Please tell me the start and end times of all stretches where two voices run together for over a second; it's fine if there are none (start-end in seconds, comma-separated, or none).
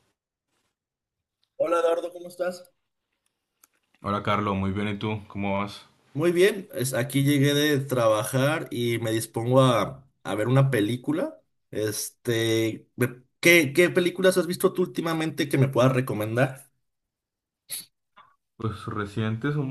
none